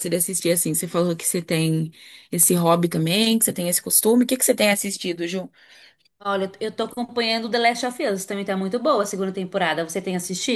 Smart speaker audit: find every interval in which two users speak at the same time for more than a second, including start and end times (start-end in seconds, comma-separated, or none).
none